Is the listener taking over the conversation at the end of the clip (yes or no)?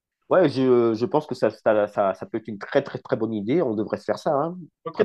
yes